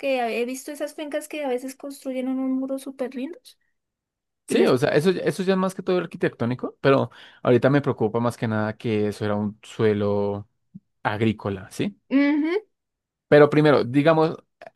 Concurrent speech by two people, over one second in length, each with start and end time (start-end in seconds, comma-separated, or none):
none